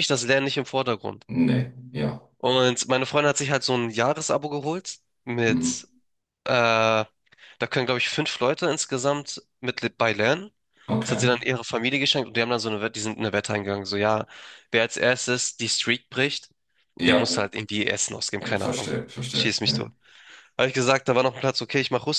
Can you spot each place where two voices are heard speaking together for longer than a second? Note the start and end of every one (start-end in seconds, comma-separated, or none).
18.4-19.9